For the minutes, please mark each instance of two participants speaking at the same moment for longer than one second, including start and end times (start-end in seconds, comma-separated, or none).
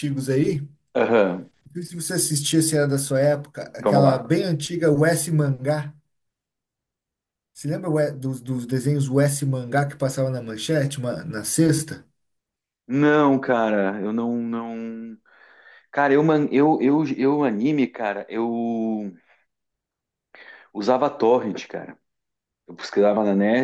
none